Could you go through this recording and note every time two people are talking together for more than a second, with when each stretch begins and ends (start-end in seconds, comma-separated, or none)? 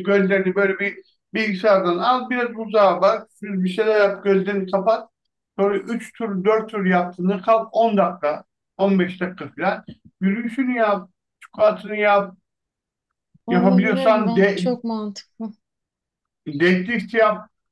13.5-14.7